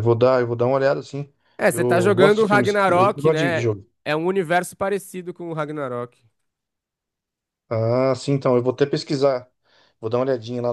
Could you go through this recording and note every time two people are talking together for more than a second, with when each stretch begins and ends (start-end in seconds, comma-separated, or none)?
1.7-3.6